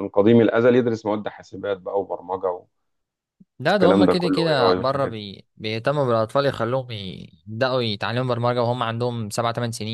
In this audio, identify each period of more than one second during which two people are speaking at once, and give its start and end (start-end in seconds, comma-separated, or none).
3.7-5.2